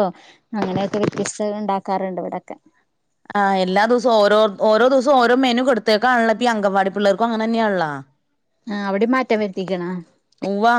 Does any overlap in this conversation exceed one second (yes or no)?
no